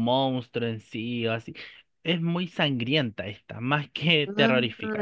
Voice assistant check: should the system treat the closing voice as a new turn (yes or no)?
no